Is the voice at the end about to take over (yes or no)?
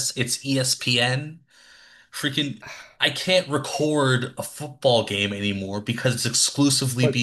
no